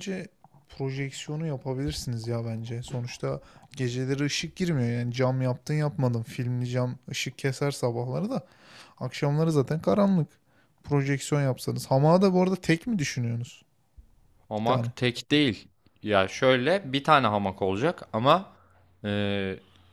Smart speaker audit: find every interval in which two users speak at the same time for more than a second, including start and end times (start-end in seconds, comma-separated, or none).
none